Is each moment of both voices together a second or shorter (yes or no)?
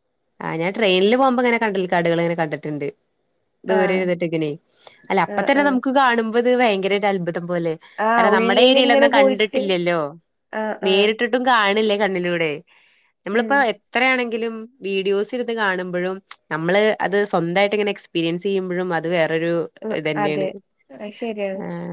no